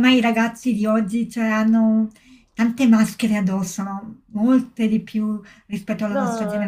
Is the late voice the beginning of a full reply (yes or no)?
yes